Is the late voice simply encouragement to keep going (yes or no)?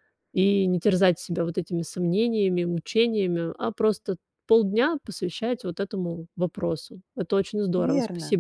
no